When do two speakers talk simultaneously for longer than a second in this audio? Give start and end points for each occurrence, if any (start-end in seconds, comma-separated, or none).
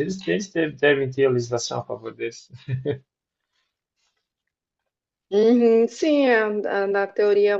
none